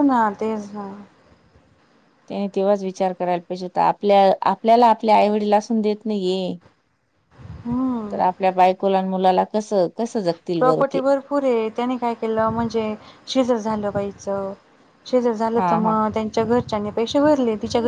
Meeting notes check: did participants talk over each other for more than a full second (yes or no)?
no